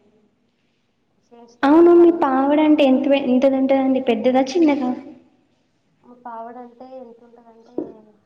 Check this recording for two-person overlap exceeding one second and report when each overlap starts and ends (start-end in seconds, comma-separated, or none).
none